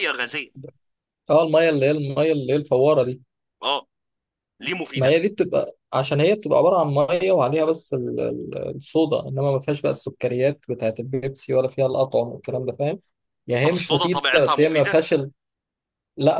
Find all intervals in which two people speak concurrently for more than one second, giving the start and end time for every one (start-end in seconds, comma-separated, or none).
13.6-15.0